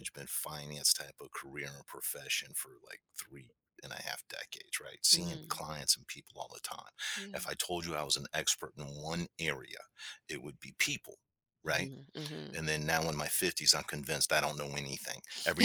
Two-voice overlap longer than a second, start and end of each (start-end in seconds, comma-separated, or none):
none